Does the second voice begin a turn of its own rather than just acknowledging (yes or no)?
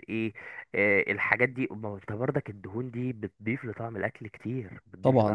yes